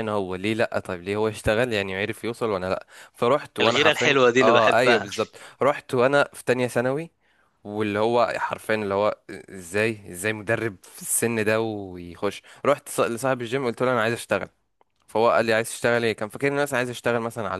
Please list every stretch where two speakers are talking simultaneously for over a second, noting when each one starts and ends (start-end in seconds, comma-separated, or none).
3.6-5.1